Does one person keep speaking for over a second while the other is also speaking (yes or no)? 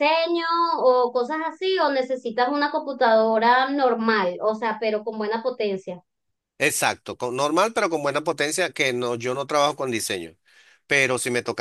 no